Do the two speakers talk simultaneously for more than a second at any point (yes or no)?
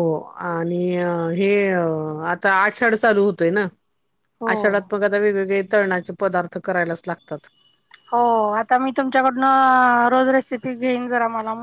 no